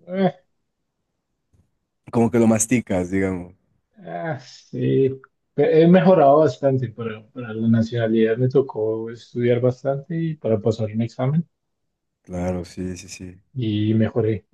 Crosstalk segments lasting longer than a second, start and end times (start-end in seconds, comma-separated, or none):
none